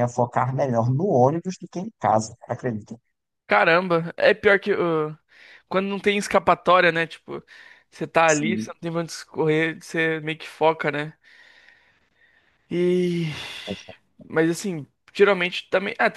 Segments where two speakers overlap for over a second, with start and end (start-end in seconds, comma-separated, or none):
none